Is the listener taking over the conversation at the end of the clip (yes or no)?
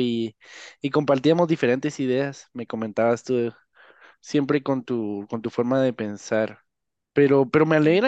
no